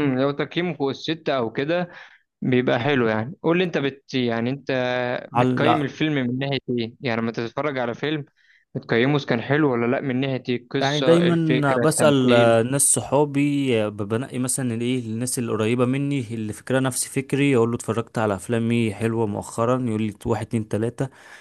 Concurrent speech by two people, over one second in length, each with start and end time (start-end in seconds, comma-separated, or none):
10.8-12.5